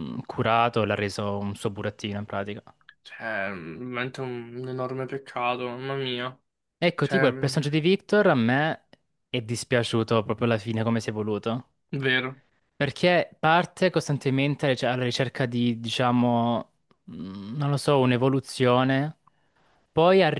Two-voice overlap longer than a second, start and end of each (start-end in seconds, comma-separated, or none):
none